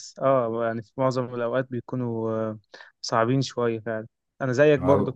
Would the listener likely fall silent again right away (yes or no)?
yes